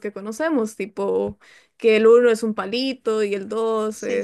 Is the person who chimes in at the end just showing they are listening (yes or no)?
yes